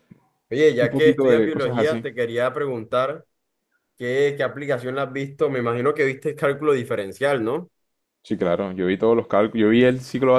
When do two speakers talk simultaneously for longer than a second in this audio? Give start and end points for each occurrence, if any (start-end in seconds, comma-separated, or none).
0.8-2.0